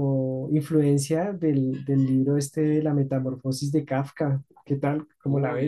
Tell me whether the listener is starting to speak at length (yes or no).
yes